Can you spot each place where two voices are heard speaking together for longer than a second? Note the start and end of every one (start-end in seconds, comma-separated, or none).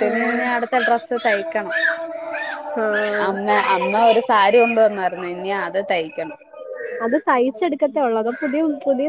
none